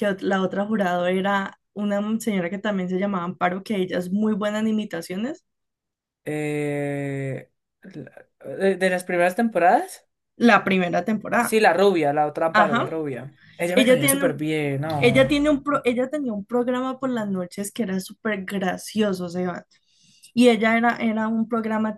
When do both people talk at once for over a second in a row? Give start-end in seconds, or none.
none